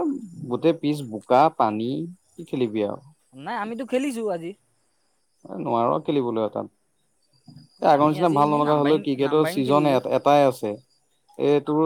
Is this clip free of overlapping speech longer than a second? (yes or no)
no